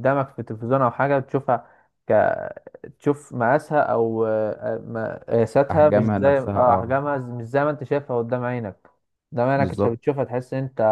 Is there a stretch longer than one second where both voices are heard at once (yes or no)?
yes